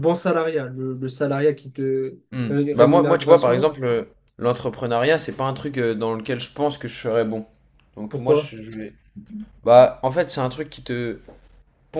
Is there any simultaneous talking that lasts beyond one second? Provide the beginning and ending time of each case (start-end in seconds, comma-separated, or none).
2.3-3.7